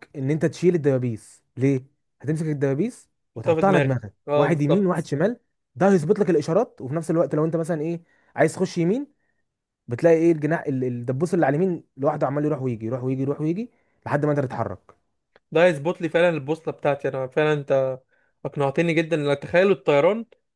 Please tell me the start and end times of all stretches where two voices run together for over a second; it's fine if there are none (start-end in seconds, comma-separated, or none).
3.4-5.1